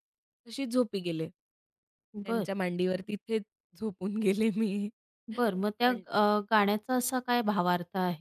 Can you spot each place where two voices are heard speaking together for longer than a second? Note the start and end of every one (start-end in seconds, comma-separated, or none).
none